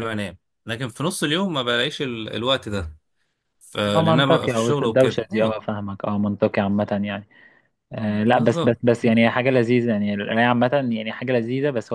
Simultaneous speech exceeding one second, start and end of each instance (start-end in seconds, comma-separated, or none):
3.9-5.6